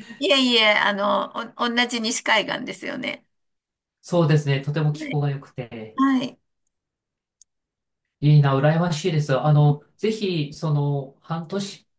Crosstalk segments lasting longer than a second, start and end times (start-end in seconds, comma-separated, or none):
none